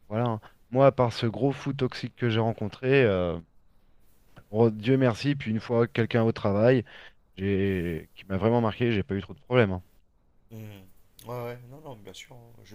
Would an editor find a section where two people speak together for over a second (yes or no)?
no